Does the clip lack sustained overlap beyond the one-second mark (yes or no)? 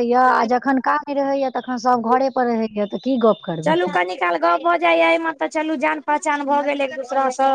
yes